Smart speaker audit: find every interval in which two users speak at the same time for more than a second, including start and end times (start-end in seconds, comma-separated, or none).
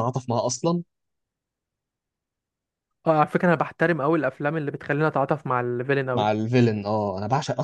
none